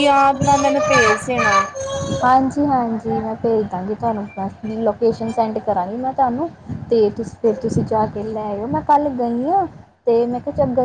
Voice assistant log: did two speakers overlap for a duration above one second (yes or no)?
no